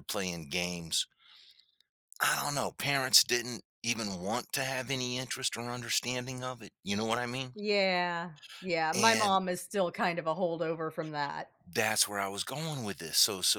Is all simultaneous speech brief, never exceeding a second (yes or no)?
yes